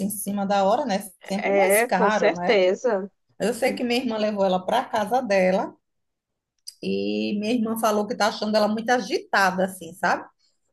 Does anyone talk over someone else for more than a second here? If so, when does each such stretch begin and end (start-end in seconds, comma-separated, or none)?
1.4-2.6